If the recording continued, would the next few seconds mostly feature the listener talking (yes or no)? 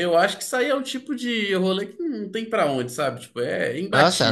yes